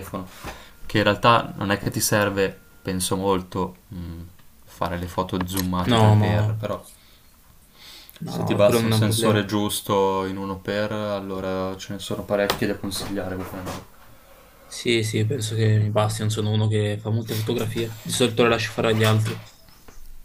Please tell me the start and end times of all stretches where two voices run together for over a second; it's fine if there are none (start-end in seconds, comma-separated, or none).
8.2-9.5